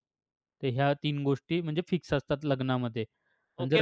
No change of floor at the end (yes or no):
no